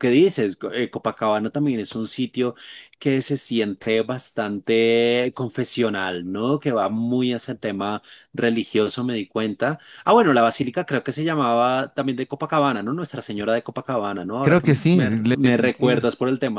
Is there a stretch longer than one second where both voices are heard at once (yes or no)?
yes